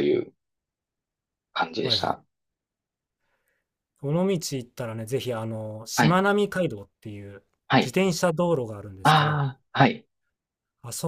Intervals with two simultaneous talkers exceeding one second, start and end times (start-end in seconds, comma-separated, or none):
none